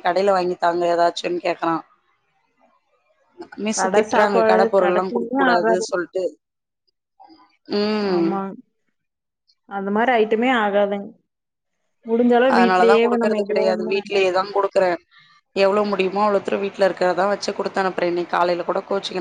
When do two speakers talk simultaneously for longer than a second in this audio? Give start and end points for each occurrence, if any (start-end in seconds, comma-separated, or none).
3.8-5.8